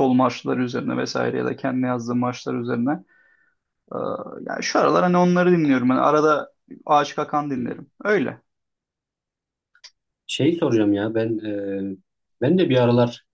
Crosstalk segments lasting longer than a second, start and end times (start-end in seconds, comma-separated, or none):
none